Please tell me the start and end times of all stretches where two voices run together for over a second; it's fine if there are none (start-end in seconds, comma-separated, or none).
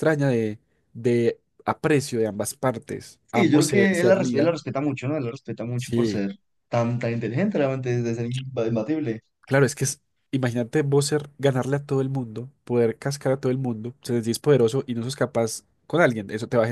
3.2-4.6